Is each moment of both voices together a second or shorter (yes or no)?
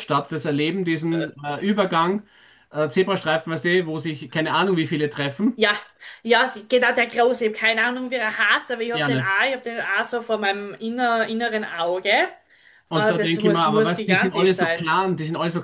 no